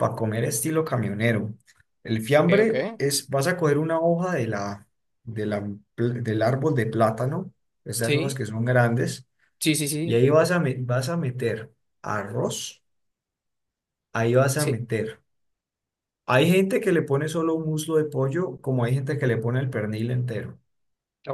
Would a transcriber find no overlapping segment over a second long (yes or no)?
yes